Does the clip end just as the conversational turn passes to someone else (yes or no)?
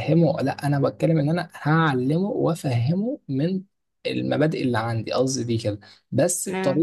no